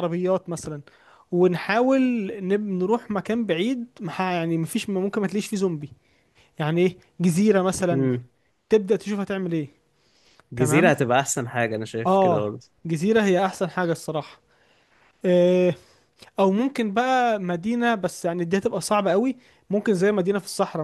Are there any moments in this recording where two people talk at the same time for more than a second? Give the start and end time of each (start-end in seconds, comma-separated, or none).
none